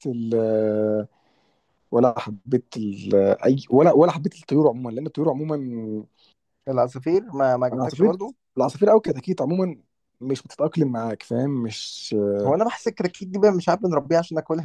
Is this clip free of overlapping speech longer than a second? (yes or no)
yes